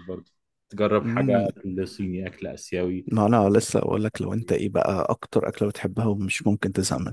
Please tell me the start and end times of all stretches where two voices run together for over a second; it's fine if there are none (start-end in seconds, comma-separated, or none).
none